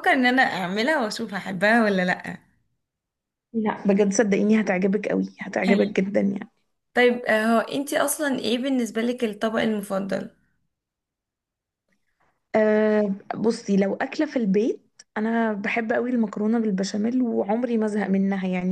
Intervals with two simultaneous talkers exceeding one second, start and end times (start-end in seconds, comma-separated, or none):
none